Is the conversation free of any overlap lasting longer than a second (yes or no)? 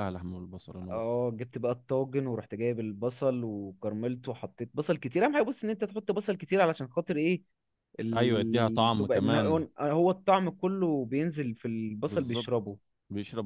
no